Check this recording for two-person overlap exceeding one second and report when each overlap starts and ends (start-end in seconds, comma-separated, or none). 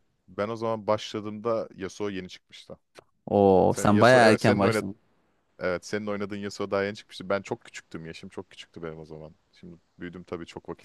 3.7-4.9